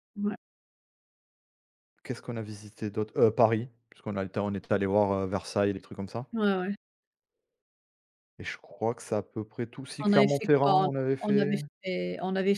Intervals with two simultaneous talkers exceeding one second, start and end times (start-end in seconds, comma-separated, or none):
10.0-11.6